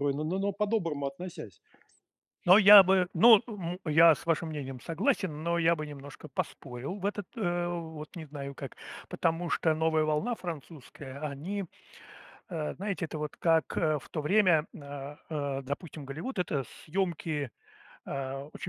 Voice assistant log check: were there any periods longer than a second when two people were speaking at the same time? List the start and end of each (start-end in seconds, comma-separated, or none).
none